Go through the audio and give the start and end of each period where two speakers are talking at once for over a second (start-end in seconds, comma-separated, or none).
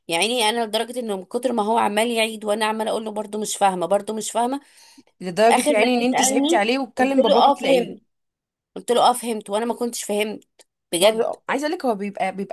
5.5-7.9